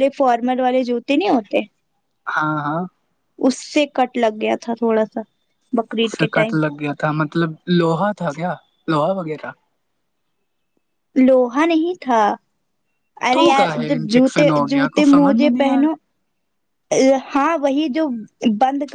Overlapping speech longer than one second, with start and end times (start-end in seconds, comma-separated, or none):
13.3-15.8